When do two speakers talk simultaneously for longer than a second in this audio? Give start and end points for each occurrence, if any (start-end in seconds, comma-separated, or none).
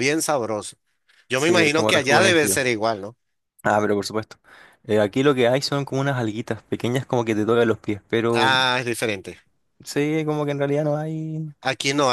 1.4-2.6